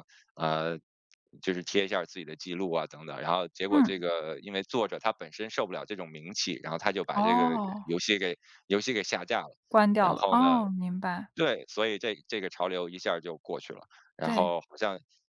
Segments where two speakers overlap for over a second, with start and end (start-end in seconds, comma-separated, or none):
none